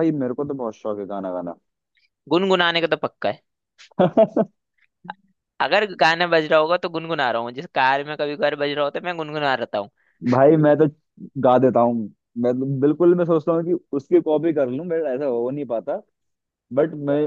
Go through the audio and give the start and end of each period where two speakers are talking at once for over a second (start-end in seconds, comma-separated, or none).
none